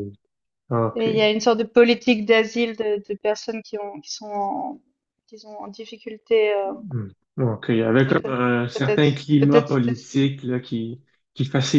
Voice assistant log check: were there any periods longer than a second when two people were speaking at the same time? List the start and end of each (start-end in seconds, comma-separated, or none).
8.1-10.2